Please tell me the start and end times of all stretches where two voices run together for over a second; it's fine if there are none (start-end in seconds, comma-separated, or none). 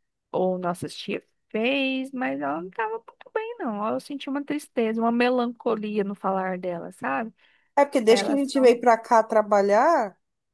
none